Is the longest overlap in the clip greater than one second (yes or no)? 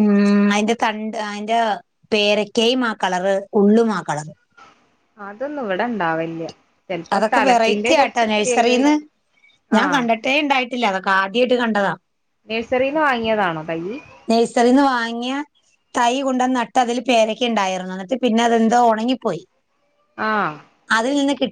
yes